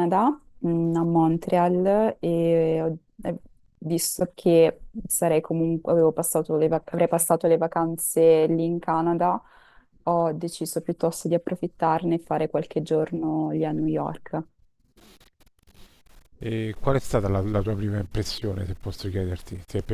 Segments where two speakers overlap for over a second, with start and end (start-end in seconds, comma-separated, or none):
none